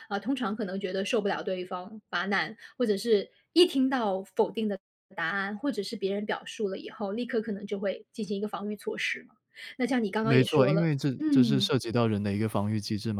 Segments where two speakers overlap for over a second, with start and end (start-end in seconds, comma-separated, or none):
10.2-11.7